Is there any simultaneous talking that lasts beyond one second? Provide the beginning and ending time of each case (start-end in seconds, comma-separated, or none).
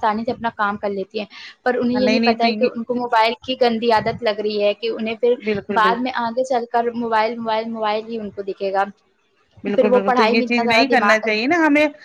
9.7-11.3